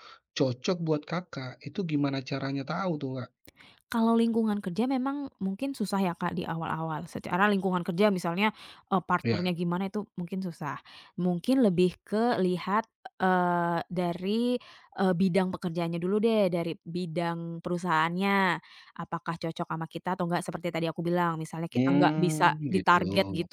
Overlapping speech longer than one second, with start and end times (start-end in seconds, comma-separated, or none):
21.7-23.0